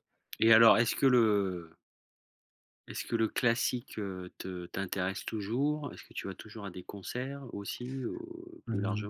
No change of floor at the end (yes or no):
no